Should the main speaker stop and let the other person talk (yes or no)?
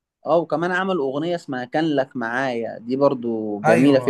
yes